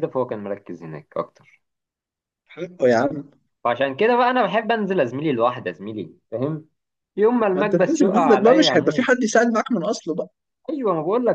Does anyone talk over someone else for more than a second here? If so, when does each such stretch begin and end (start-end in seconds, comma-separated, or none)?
7.5-9.1